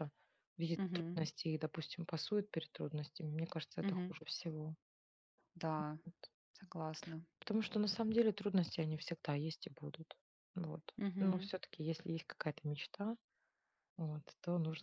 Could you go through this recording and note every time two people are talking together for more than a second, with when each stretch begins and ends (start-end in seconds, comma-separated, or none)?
none